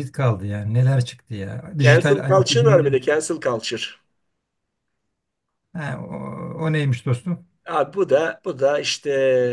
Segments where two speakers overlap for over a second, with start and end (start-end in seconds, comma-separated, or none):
1.8-3.0